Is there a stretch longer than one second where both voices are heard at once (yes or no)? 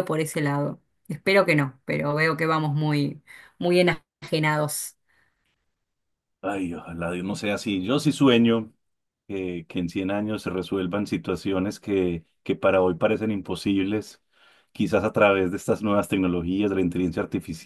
no